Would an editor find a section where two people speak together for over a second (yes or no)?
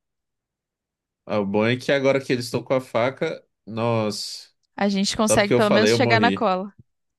yes